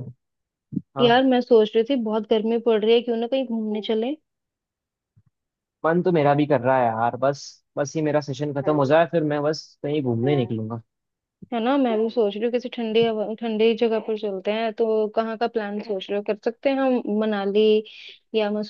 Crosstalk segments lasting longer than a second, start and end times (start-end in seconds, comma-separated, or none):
none